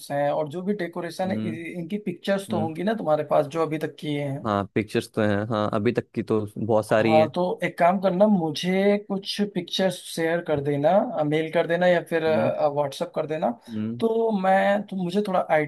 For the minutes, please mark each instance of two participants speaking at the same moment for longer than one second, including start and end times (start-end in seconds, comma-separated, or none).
none